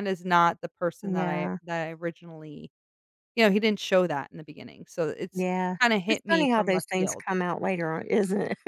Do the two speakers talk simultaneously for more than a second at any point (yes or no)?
yes